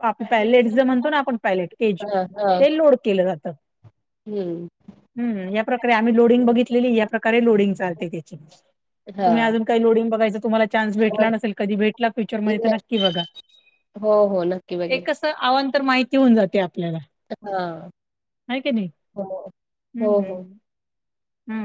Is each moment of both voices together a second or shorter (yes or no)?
yes